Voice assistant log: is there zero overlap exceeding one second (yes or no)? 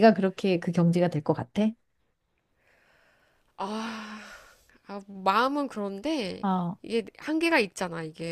yes